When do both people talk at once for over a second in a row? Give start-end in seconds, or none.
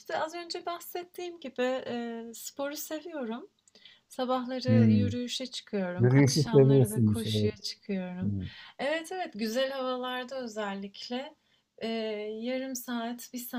6.0-7.5